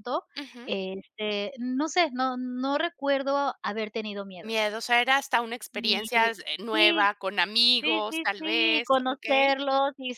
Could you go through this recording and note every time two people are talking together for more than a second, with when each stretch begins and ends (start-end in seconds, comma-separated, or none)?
7.8-9.6